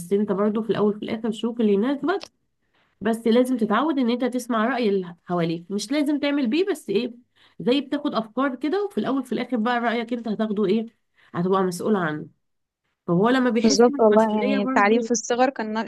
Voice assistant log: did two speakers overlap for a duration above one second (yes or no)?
yes